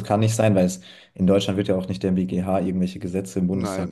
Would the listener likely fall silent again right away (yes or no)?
no